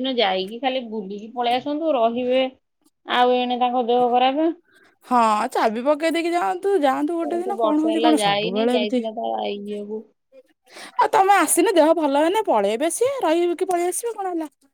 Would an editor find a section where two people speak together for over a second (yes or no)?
yes